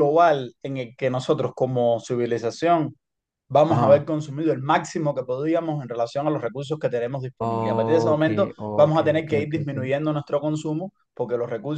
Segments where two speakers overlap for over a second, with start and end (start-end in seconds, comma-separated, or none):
7.4-9.7